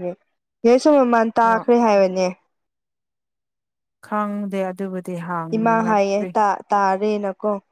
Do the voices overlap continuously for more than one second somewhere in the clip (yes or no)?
no